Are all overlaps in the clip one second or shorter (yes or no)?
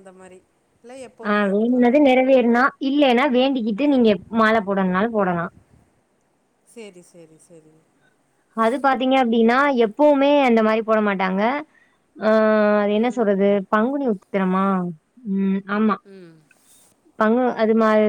yes